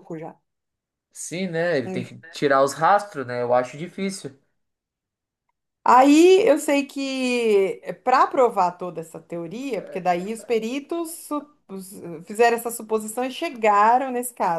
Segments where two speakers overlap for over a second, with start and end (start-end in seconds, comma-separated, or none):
none